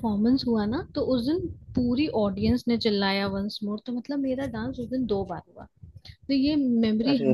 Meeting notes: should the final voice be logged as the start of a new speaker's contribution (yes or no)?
no